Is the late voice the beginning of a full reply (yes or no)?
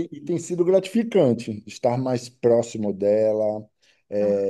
no